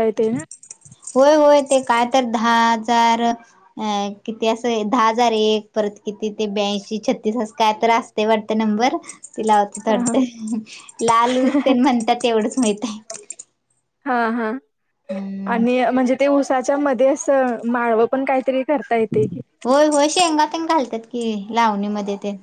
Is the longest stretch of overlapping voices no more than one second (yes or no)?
yes